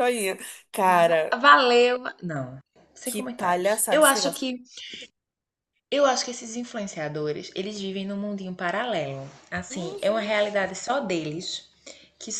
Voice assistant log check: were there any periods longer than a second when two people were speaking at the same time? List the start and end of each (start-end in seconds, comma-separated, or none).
3.0-4.4